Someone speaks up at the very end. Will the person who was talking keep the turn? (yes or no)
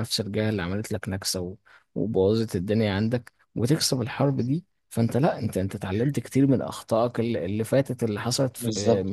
no